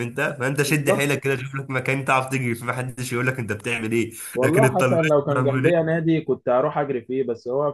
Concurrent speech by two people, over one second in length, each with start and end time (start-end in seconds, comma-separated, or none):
4.3-6.0